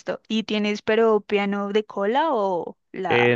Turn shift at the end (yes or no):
yes